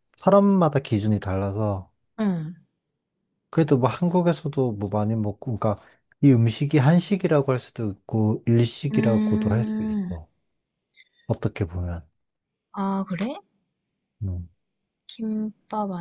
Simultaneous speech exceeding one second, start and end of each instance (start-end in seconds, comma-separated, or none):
8.9-10.1